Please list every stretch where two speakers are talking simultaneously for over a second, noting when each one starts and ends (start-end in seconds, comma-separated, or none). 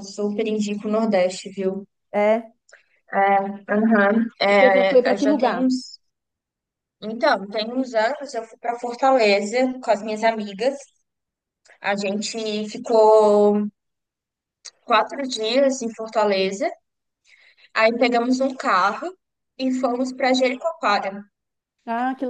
4.5-5.7